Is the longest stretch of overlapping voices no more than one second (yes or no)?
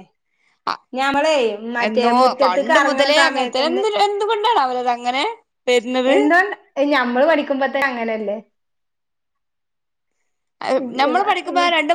no